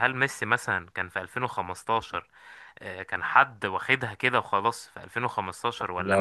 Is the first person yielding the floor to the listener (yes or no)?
no